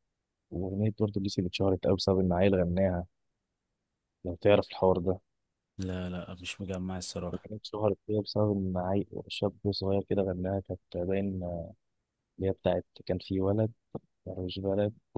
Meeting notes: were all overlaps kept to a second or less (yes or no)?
yes